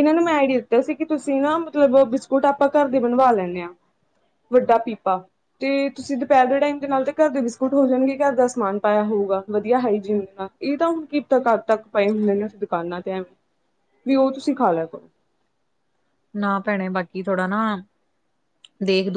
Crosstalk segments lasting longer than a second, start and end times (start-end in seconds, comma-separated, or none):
none